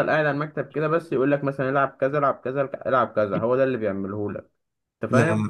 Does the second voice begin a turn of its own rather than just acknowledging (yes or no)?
no